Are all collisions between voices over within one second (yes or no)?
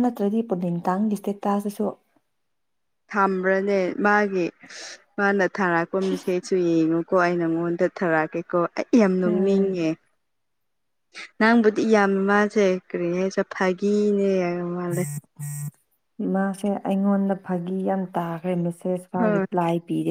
yes